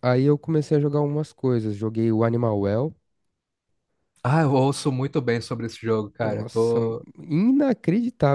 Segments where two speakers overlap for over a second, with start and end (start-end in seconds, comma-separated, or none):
none